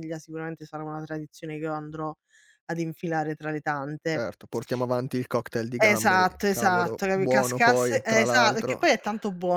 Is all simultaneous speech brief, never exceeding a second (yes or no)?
no